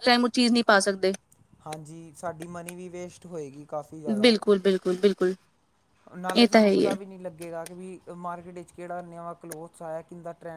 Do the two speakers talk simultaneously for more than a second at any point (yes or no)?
no